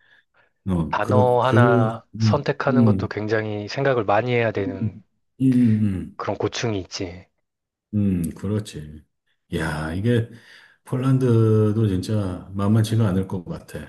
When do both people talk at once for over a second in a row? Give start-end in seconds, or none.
0.9-3.1